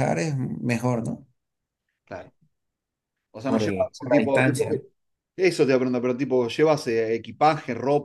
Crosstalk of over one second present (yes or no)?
yes